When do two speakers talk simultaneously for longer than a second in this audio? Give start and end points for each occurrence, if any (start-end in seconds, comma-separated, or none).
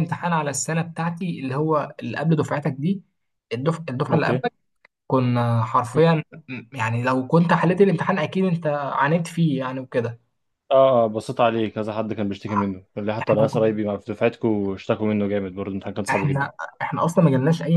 none